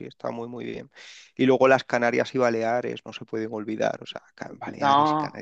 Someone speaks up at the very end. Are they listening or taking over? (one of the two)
listening